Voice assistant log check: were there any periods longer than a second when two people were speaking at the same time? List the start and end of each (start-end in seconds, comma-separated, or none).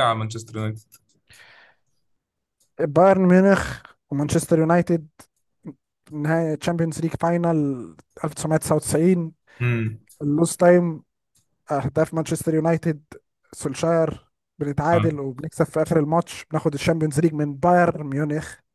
none